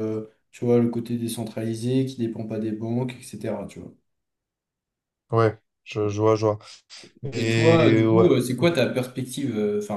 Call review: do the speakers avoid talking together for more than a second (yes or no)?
no